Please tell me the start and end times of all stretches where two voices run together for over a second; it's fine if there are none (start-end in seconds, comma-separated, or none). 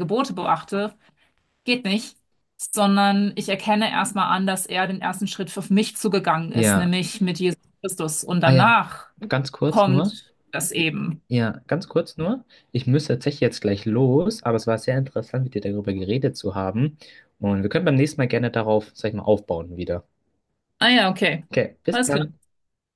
none